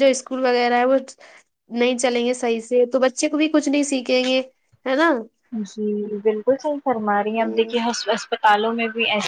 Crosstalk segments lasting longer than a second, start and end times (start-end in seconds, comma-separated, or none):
none